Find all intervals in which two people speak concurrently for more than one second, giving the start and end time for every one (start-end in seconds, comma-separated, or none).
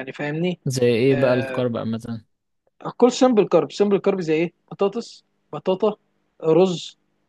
none